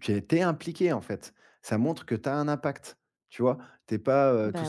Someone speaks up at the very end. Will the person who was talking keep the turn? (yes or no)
yes